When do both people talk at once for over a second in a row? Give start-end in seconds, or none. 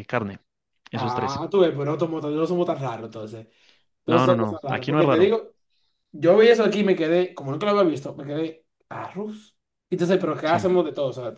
4.1-5.3